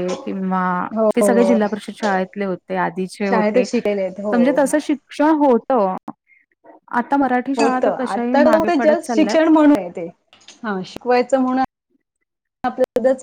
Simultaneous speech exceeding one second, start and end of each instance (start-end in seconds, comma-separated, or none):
7.6-9.4